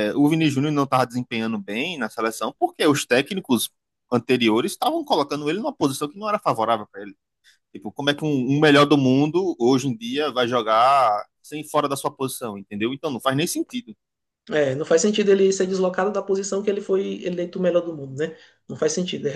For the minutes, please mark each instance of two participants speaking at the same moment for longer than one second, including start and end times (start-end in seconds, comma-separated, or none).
none